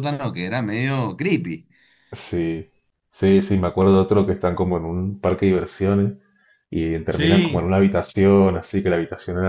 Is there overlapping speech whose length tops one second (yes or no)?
no